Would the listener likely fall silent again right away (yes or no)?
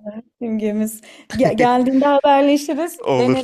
no